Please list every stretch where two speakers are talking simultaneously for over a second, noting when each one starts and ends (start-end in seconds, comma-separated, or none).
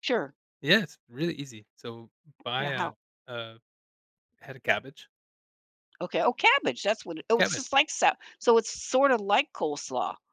none